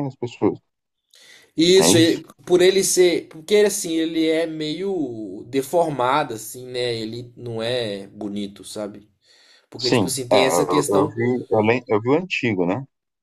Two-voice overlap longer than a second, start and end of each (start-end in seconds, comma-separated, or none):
9.8-11.2